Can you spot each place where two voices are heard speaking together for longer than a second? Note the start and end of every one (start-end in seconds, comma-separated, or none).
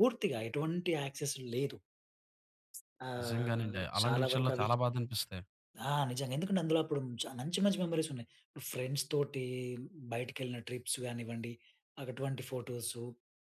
3.2-4.7